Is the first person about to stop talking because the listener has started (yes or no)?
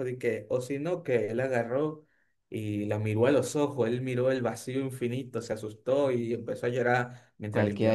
yes